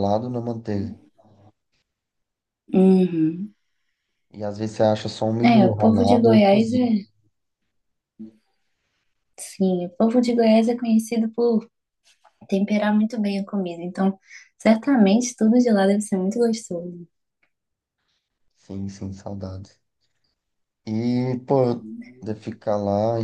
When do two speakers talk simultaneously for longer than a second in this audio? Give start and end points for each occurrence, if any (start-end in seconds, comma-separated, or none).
5.4-7.0